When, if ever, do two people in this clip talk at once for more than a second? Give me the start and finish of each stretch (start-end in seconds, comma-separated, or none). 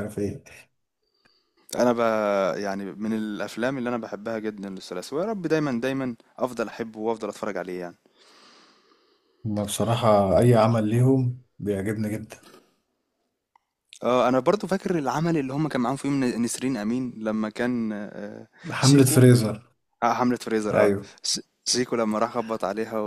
none